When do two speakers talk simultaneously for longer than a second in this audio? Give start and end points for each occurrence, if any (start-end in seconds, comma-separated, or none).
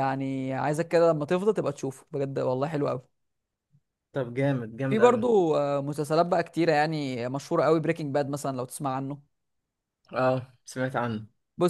none